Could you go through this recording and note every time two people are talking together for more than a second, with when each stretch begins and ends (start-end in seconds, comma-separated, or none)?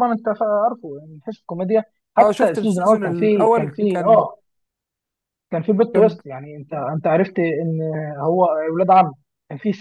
2.2-4.3